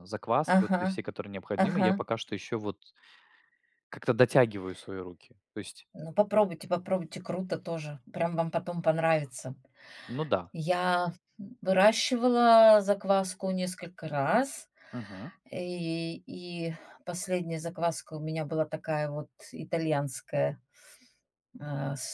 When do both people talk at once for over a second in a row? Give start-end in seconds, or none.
none